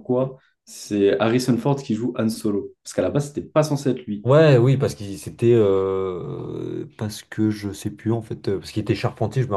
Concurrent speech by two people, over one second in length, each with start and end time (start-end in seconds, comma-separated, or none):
none